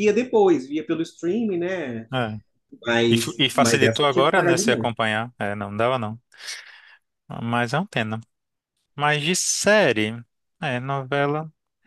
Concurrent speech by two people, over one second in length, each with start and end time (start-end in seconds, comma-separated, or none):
3.1-4.9